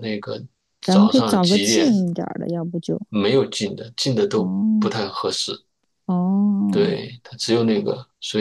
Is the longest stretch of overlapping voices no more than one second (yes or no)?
no